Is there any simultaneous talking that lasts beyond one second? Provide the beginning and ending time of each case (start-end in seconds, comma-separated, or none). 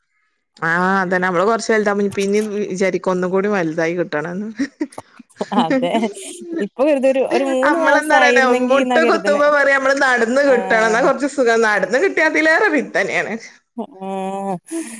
7.7-9.4